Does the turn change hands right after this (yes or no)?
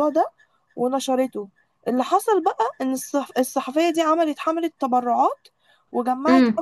no